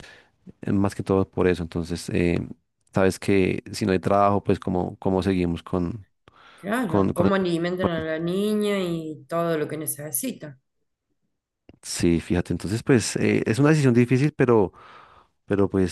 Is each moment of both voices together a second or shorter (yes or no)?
yes